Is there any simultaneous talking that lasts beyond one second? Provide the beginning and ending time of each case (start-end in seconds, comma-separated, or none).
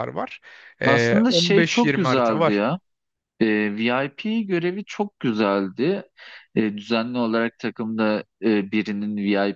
0.8-2.6